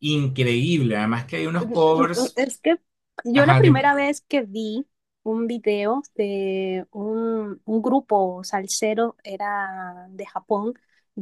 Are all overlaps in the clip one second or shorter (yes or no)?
yes